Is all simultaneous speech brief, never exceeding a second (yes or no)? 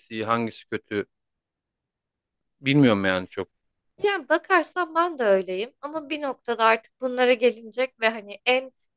yes